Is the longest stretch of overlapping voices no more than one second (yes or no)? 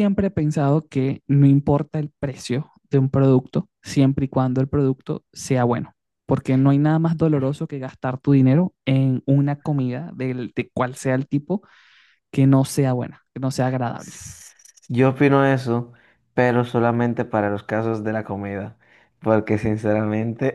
yes